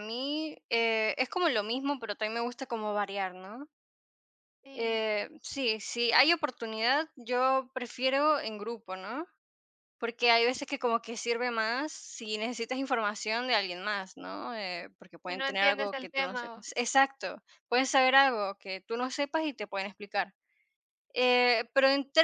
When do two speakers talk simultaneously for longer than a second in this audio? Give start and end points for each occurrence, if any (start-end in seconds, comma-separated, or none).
15.3-16.7